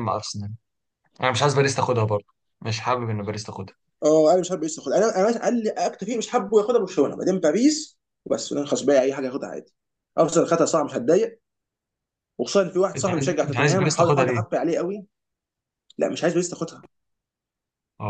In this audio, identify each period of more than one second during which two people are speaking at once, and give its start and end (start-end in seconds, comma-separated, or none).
13.0-14.4